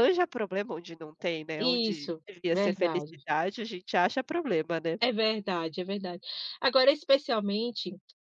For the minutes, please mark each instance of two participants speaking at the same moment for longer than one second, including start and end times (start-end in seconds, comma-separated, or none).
1.6-3.1